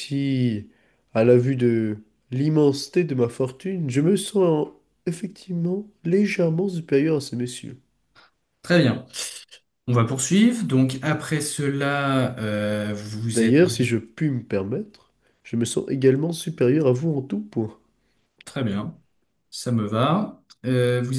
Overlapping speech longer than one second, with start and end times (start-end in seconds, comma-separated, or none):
none